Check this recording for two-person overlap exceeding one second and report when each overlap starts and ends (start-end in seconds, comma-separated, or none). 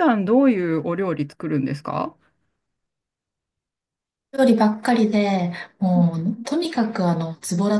none